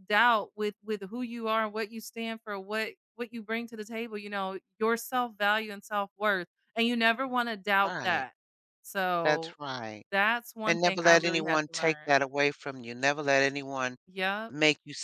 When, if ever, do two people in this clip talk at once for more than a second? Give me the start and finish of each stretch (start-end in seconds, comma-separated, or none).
10.7-12.2